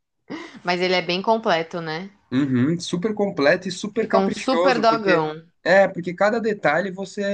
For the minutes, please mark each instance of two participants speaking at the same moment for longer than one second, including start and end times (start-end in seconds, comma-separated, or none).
3.9-5.3